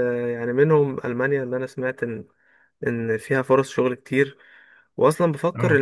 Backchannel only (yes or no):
yes